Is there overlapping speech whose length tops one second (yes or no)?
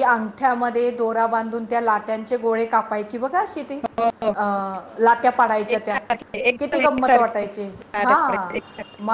yes